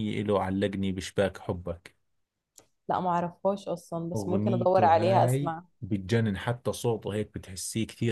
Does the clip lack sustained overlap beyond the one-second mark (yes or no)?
no